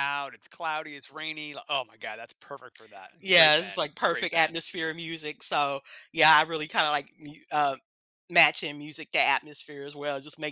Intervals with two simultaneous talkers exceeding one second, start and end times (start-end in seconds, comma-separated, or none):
3.2-4.6